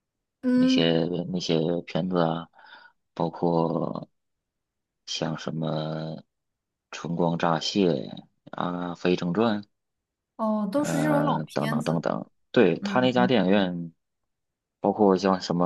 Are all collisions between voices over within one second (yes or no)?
no